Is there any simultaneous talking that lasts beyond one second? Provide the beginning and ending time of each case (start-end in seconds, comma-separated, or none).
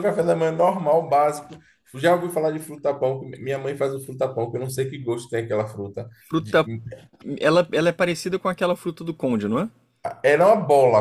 none